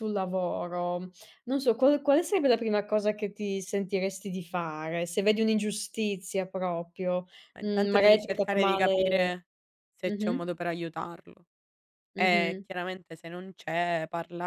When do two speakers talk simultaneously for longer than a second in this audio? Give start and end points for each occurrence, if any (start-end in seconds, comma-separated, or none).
7.5-8.9